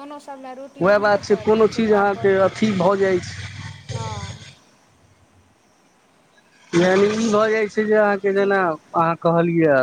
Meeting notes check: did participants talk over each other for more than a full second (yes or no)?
yes